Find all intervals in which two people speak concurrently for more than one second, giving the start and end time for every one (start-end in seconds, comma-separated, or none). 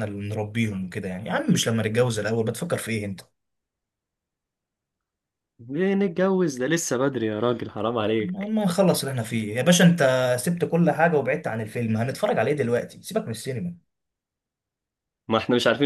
none